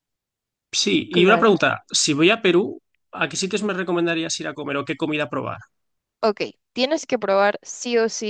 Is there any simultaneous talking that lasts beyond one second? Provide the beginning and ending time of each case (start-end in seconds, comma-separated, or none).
none